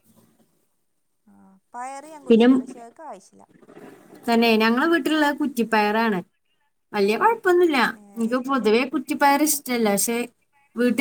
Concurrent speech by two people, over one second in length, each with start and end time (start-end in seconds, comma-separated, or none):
none